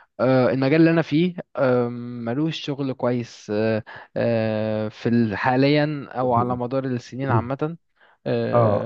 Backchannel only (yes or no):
yes